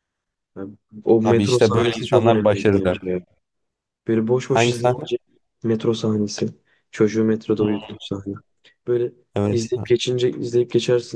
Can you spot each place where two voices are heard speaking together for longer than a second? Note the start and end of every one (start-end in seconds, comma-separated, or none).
1.2-3.0